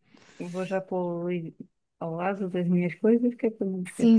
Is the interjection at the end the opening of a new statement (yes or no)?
yes